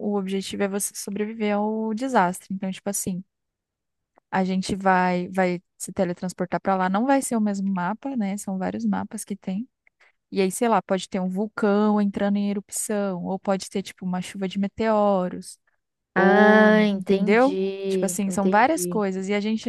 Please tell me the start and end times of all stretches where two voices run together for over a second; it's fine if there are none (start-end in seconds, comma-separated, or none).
16.1-19.1